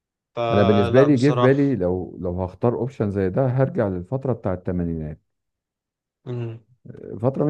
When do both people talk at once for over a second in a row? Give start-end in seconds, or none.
0.5-1.8